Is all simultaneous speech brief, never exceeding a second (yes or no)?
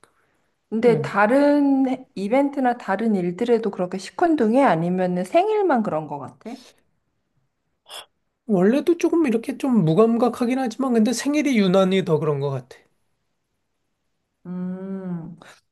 yes